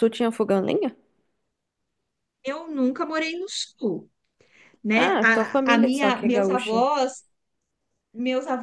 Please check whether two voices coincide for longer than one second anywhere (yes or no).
yes